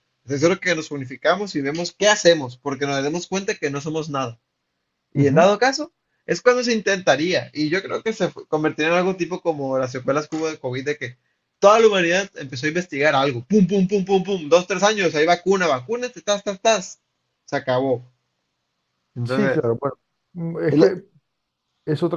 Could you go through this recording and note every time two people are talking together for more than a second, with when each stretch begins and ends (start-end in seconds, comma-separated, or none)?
none